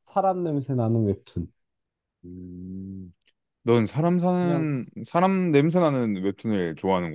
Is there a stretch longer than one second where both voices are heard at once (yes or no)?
no